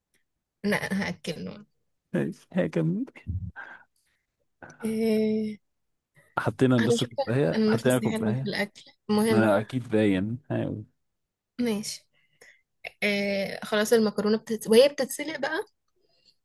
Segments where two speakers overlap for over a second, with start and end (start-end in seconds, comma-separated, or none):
6.8-8.5